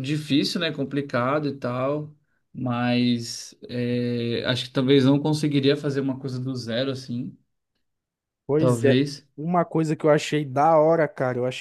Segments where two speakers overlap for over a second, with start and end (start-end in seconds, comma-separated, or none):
none